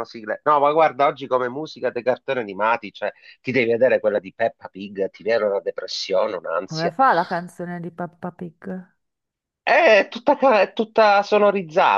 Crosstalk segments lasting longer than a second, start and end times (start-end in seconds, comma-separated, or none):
none